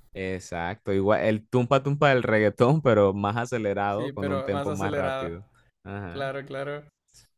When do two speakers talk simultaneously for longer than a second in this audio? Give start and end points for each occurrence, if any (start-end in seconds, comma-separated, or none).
3.9-5.4